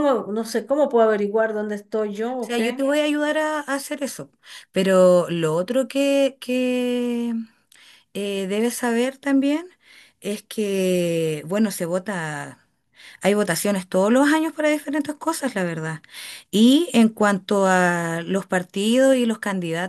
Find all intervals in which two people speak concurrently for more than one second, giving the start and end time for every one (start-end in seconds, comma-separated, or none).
none